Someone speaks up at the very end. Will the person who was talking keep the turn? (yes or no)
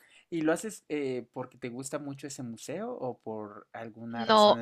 no